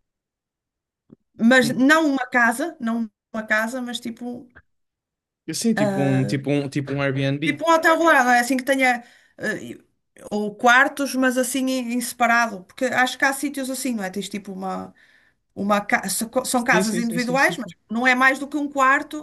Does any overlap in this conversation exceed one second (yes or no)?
yes